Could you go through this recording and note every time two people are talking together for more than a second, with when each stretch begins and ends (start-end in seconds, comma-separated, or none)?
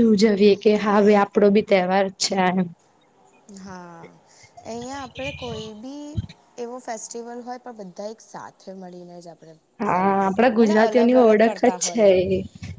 9.9-12.2